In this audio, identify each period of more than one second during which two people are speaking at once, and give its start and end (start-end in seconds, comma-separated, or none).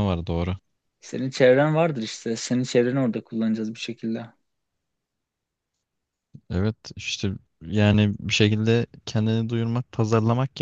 none